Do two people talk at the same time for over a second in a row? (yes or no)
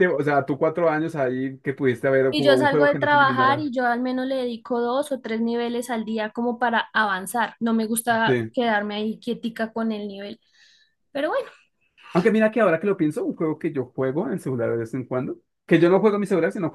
yes